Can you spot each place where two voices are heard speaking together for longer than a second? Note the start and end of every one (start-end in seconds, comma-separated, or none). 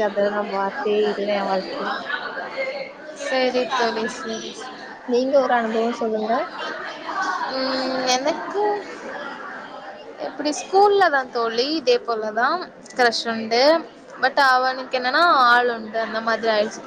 none